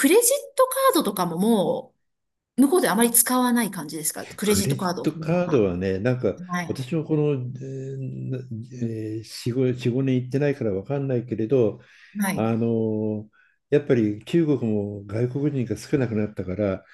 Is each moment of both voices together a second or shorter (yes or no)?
no